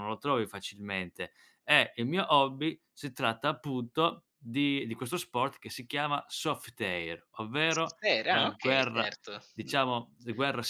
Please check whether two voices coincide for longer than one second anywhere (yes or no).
yes